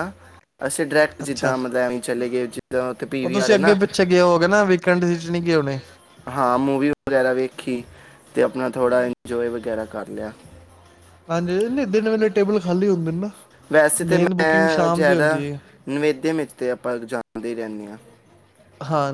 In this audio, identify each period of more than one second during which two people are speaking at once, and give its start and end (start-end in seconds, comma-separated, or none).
14.1-15.4